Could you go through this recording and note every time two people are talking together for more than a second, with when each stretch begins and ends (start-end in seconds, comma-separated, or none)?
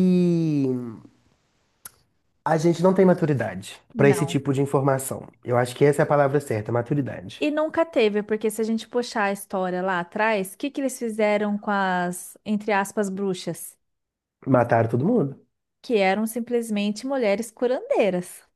none